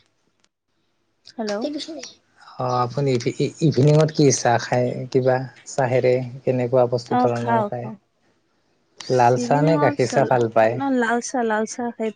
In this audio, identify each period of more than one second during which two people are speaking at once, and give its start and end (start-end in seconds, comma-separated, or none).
9.2-10.7